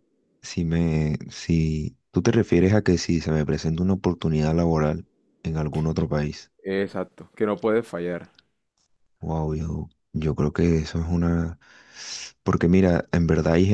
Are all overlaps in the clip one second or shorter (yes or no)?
yes